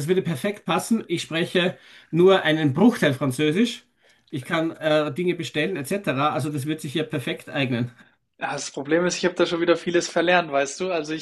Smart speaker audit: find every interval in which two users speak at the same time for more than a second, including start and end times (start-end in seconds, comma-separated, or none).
none